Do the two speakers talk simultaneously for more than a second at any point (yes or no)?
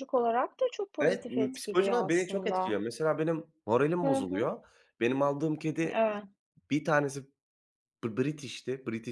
yes